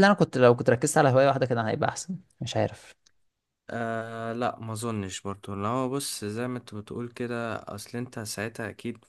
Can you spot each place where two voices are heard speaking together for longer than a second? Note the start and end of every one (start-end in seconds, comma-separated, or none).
none